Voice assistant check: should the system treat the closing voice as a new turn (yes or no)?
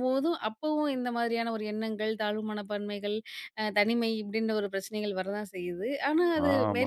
yes